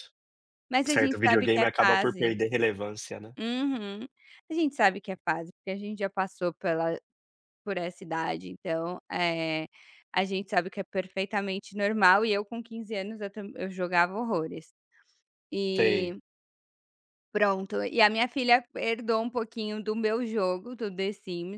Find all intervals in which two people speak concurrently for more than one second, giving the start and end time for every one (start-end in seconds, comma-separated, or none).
0.9-2.3